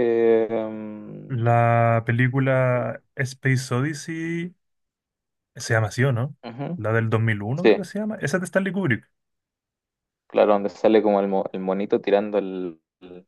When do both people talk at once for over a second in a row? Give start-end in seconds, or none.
none